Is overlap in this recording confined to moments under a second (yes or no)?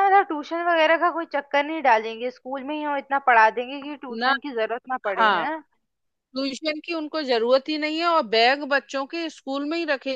yes